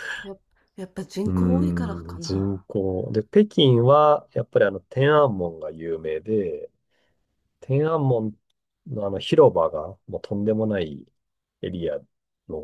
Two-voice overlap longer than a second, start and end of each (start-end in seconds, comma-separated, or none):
1.2-2.6